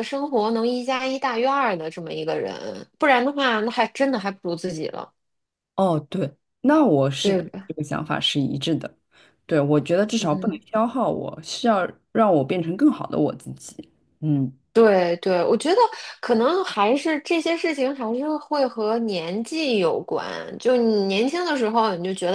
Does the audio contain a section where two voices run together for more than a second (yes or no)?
no